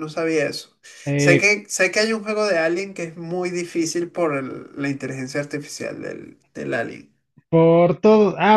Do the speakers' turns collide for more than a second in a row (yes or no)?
no